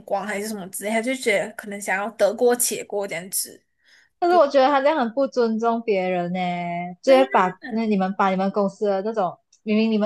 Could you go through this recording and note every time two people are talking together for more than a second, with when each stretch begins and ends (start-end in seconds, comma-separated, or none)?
none